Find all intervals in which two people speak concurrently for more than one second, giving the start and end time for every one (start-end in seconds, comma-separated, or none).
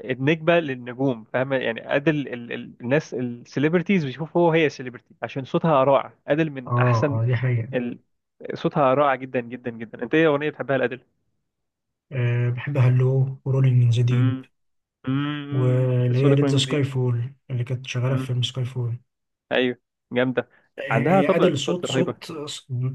15.5-16.9, 20.9-22.3